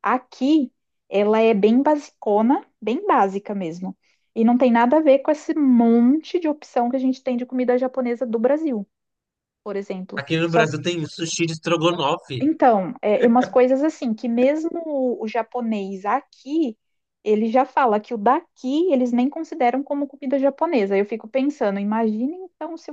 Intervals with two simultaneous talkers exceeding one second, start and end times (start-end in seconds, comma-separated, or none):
none